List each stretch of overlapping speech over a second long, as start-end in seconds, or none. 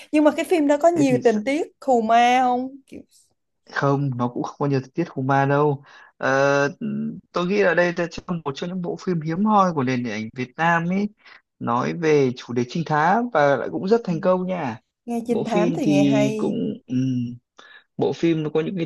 15.3-16.6